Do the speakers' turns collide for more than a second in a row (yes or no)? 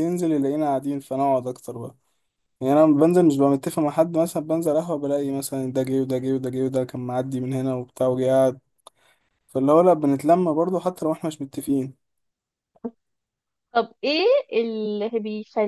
no